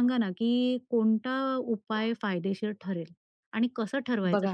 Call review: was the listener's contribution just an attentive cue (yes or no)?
yes